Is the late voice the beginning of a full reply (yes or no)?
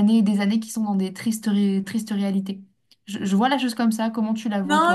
yes